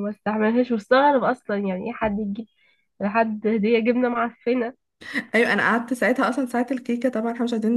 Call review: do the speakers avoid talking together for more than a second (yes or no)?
yes